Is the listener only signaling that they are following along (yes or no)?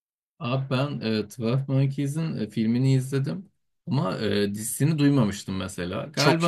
yes